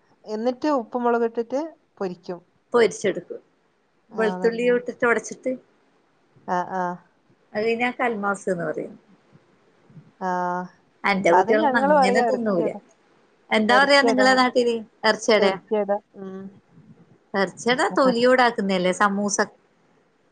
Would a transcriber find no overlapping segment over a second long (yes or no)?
no